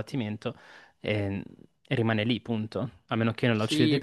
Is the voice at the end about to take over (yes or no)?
yes